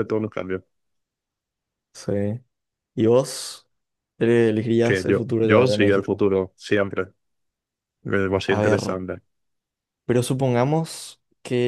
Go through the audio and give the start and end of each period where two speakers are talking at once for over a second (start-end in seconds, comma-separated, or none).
4.8-6.2